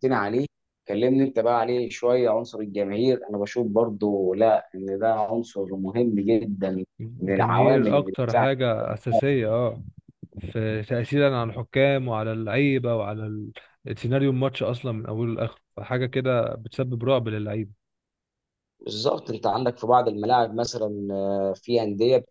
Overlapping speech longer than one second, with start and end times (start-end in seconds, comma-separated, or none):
7.2-8.5